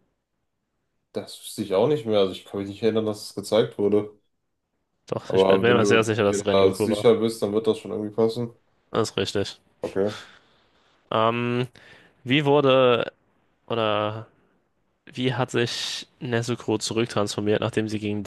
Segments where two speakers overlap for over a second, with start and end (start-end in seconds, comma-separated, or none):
5.3-7.0